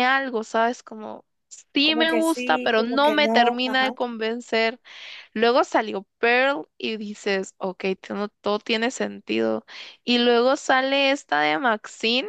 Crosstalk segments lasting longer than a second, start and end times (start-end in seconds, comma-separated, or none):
1.8-3.9